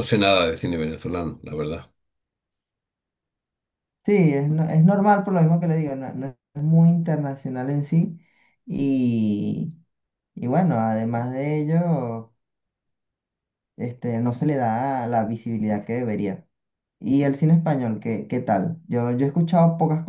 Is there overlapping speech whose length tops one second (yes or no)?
no